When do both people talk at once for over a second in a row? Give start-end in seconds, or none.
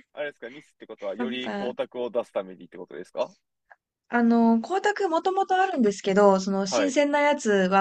none